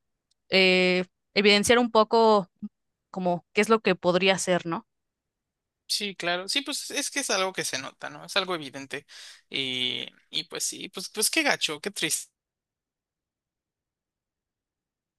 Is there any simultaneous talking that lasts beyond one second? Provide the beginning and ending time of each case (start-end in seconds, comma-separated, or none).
none